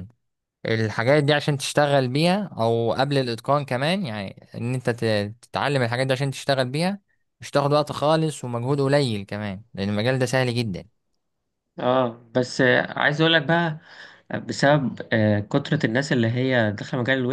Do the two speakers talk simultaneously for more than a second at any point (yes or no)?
no